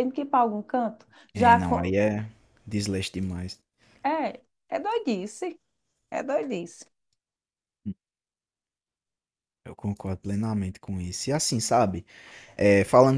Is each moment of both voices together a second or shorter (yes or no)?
yes